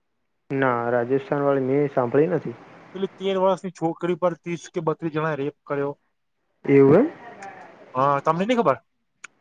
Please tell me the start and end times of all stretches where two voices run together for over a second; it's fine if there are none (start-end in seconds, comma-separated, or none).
none